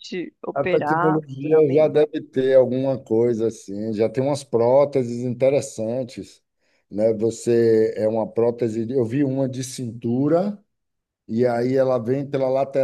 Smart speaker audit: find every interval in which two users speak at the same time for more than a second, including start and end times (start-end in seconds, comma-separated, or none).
0.5-1.9